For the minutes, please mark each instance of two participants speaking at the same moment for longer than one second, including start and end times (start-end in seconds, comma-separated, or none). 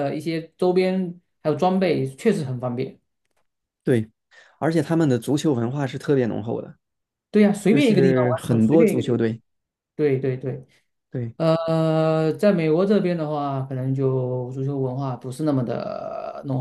7.7-9.2